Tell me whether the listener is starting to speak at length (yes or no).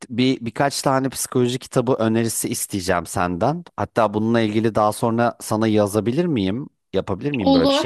yes